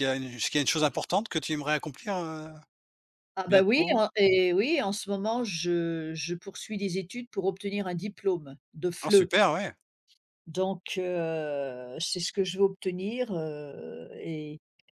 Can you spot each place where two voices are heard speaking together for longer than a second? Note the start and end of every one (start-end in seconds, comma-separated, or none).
none